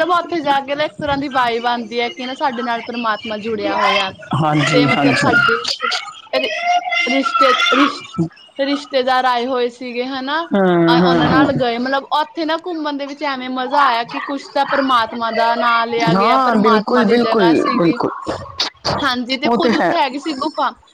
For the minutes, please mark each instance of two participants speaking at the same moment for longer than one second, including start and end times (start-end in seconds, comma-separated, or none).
16.1-17.9